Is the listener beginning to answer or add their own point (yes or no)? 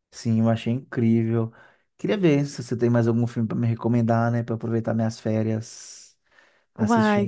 yes